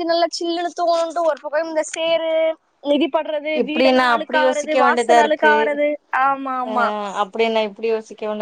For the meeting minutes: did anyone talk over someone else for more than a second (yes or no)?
yes